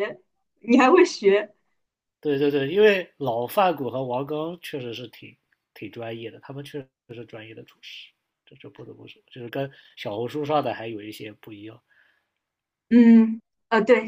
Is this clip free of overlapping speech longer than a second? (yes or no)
yes